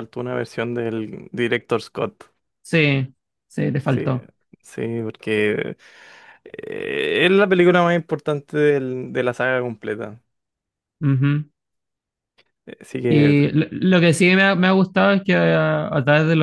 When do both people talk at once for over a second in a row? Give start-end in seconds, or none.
none